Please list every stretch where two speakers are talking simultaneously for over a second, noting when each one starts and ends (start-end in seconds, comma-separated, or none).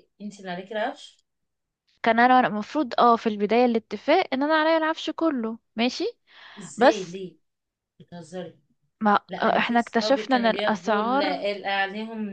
9.3-11.4